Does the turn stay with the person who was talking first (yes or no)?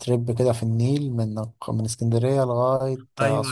no